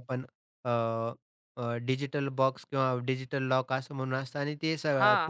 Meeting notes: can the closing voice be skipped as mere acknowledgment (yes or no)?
yes